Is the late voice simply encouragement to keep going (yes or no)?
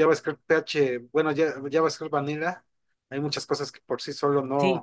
no